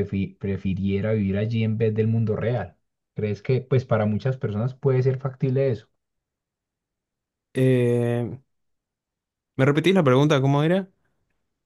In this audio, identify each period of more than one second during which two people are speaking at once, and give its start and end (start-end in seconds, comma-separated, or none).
none